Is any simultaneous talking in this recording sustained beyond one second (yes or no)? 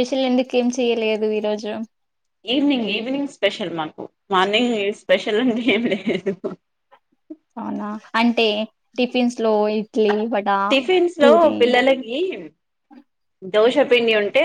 no